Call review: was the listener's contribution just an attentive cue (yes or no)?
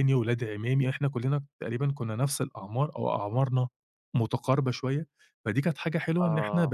yes